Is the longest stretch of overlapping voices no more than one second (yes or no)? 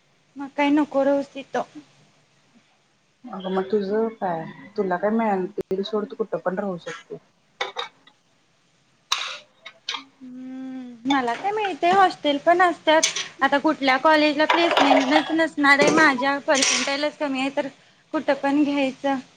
yes